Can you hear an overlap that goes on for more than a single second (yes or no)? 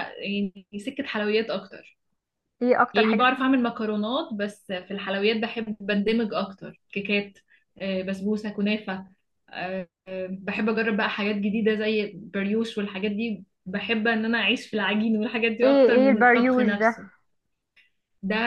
yes